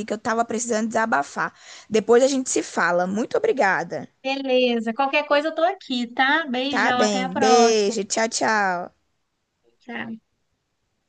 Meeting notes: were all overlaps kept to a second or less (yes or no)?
no